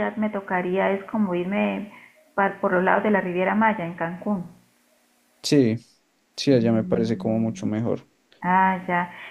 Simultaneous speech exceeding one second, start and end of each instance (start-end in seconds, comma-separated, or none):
6.5-7.7